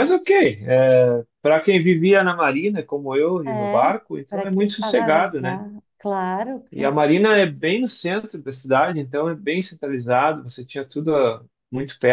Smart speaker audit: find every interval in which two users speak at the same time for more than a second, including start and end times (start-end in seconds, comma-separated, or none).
3.5-5.6